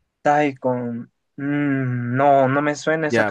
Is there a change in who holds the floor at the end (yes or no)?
yes